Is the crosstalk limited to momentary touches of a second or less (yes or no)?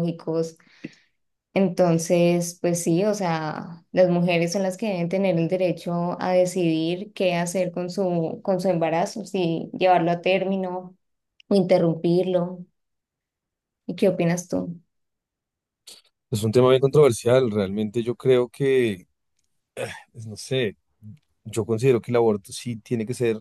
yes